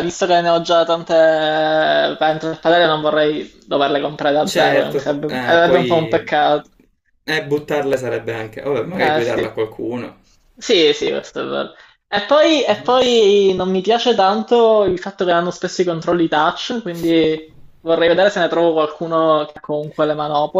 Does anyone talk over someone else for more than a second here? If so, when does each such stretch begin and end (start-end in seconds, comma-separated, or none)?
4.4-6.3